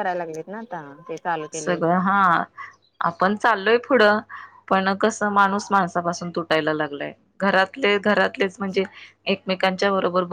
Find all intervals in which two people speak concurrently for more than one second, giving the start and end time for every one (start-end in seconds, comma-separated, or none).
none